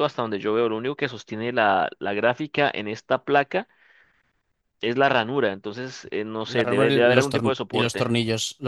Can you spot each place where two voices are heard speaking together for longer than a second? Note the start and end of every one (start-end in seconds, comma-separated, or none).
6.4-8.1